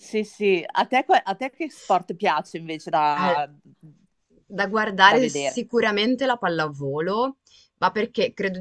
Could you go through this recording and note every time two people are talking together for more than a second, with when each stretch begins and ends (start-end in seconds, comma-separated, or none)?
none